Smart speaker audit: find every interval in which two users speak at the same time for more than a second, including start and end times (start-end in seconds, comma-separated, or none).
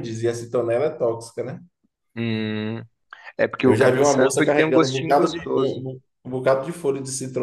3.6-5.8